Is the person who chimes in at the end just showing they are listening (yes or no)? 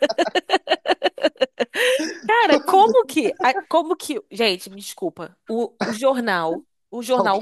yes